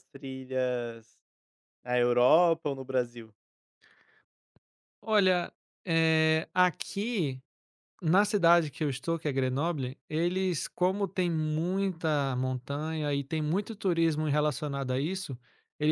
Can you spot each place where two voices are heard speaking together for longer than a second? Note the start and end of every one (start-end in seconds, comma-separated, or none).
none